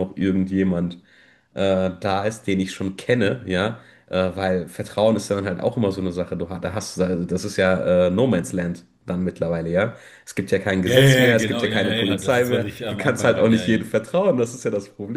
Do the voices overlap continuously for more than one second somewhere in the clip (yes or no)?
yes